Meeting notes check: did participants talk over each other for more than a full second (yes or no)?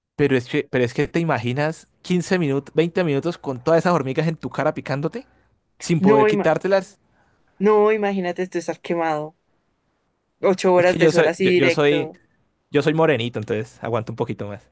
yes